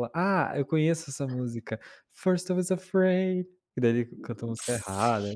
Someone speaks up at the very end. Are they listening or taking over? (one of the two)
taking over